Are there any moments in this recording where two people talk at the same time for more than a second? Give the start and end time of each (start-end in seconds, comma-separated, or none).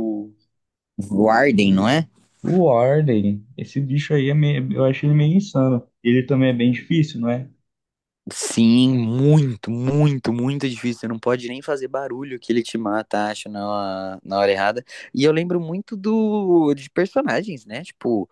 none